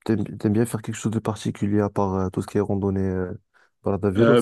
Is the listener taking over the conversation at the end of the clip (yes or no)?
yes